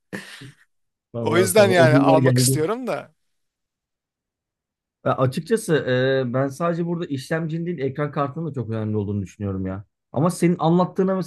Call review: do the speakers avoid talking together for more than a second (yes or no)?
no